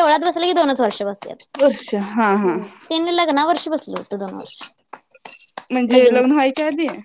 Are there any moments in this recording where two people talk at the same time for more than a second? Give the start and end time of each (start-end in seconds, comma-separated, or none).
none